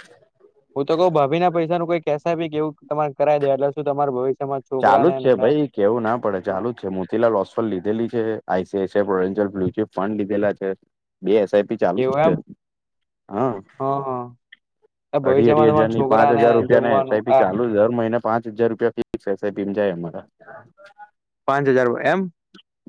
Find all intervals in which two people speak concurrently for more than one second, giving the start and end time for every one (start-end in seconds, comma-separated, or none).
15.3-17.4